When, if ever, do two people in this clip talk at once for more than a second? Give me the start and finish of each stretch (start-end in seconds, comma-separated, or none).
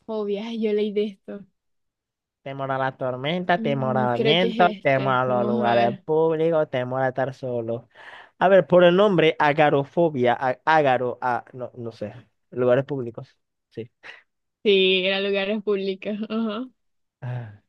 3.5-6.0